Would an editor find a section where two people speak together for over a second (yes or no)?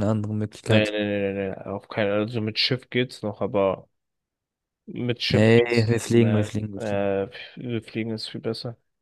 yes